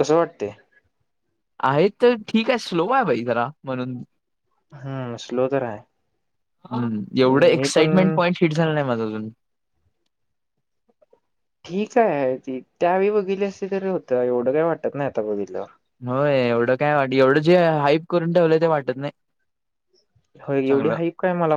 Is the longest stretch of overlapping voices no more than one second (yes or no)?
yes